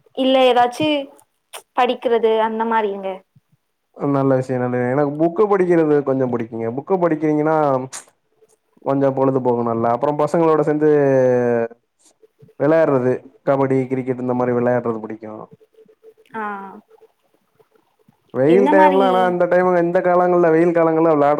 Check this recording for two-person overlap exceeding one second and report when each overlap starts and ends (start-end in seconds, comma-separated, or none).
none